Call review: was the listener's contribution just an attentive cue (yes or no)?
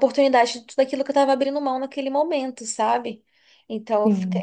yes